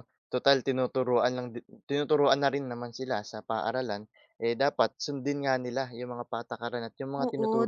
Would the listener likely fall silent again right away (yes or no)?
no